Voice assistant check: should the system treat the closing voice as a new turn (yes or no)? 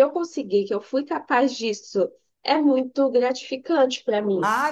yes